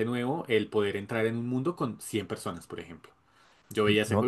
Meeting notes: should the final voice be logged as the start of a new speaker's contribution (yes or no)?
no